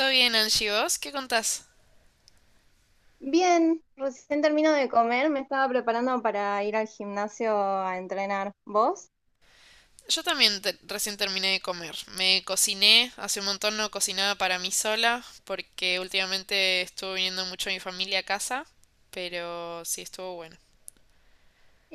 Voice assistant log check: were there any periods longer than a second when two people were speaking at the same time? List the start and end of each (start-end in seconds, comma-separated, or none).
none